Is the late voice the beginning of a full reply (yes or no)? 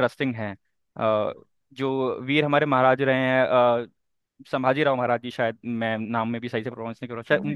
yes